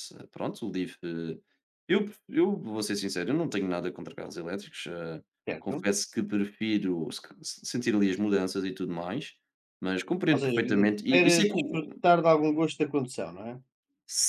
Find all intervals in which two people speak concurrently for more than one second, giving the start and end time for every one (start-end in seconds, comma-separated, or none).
10.3-12.0